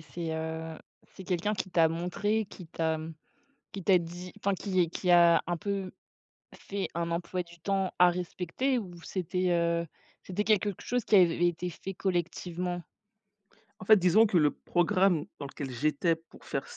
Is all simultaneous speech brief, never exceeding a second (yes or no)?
yes